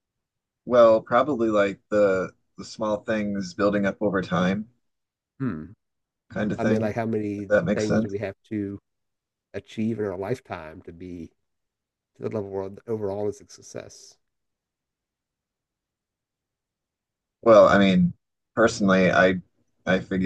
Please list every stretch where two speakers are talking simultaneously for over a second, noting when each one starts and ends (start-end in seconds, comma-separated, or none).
6.6-8.2